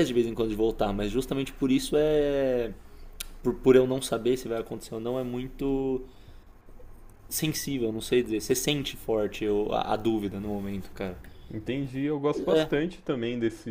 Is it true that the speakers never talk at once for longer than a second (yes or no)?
yes